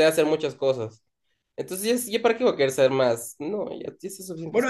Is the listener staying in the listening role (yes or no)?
no